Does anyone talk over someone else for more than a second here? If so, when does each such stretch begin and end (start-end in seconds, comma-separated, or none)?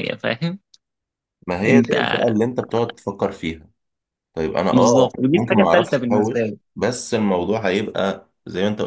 4.7-6.6